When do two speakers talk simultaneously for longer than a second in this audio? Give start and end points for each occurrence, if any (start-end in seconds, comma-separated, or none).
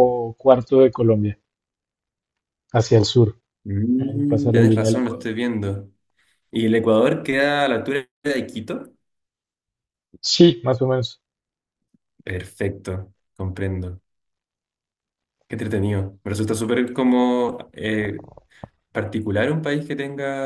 4.0-5.3